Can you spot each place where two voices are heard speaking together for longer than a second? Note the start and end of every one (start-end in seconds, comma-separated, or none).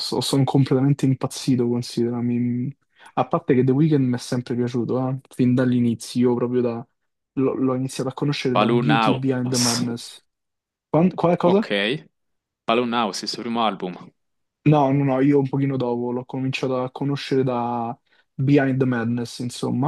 8.5-9.8